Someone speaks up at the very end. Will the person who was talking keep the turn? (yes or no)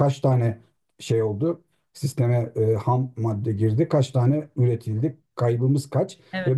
yes